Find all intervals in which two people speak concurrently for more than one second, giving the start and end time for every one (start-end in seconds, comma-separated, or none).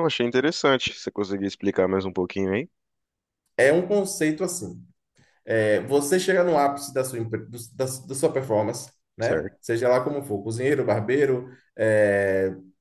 none